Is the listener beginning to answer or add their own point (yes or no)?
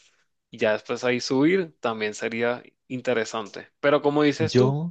no